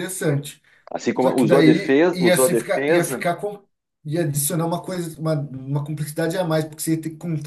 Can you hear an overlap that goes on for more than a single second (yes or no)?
yes